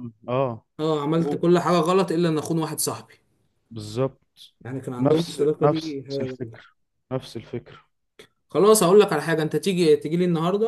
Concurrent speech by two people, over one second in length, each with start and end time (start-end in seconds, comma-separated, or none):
5.0-6.6